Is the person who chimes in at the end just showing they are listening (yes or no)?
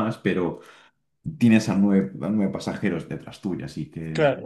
no